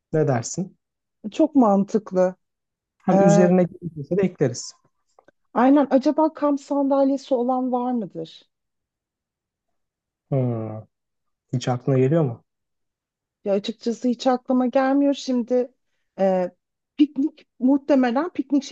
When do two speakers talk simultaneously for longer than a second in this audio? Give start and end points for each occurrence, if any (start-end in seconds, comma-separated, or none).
none